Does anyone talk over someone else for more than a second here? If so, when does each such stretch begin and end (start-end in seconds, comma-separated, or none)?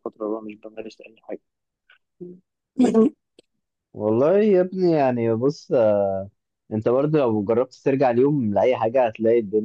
none